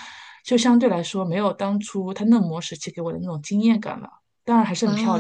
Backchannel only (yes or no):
no